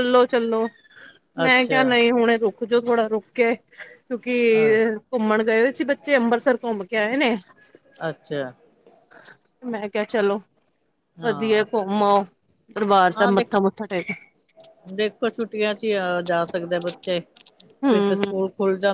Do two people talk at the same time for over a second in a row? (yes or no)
no